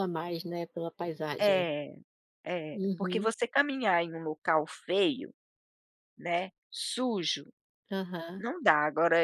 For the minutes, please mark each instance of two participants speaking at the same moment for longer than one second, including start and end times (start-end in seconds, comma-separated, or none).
none